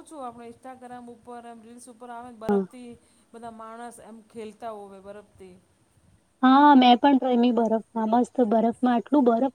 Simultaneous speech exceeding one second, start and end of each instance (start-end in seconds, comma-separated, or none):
none